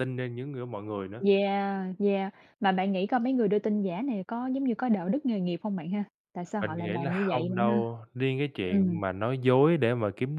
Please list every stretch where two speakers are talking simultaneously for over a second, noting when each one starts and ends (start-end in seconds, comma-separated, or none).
6.6-7.8